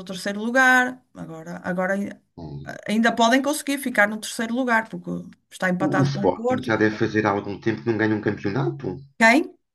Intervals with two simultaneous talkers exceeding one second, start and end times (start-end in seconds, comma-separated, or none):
5.8-7.0